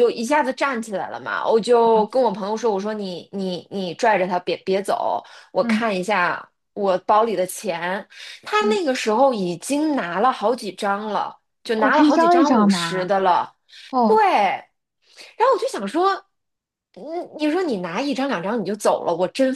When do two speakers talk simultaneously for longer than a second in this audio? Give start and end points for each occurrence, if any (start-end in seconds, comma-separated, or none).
11.8-13.1